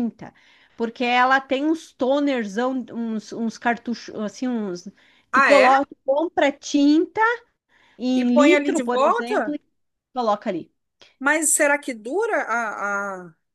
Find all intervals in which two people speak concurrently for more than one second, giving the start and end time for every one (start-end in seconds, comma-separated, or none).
8.1-9.6